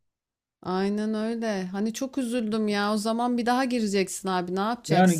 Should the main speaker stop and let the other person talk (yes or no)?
yes